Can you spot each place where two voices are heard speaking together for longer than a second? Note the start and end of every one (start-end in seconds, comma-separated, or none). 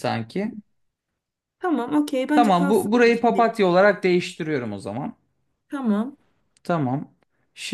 2.4-3.5